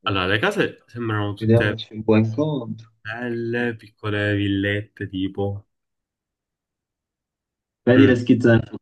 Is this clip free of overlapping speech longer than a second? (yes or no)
yes